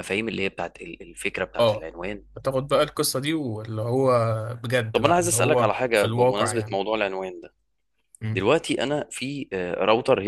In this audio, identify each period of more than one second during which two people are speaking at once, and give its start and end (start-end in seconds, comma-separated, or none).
4.9-6.8